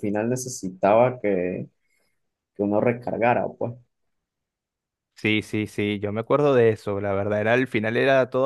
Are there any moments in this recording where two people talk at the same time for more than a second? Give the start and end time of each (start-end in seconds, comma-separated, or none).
none